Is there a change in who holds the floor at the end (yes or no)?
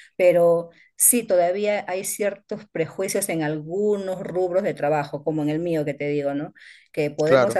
no